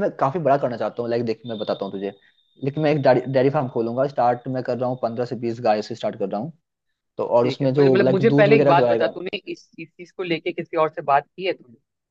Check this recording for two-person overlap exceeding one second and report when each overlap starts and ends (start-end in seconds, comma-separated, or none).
7.4-9.1